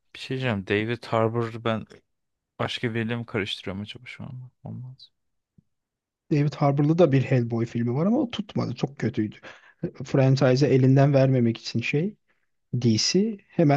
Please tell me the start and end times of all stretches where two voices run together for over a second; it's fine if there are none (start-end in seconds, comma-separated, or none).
none